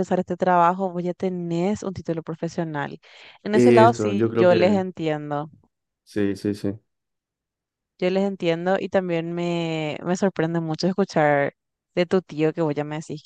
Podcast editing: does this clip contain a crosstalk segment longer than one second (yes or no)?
yes